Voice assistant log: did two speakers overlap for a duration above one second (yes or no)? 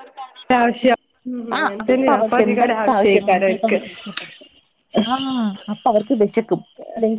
yes